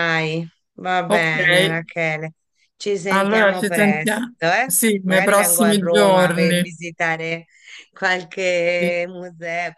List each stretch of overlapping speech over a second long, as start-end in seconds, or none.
3.1-6.8